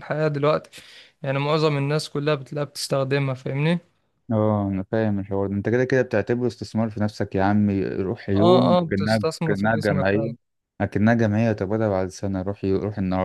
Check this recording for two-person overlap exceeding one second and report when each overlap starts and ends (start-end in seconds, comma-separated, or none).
8.4-10.3